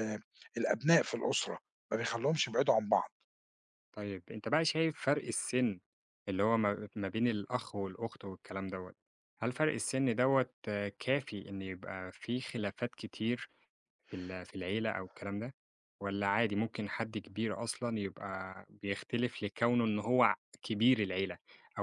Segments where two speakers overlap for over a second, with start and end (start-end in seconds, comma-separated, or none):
none